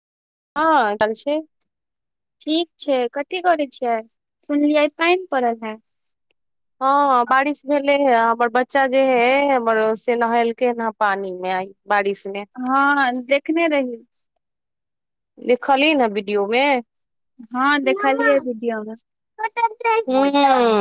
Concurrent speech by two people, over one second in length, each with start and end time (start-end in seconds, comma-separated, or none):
none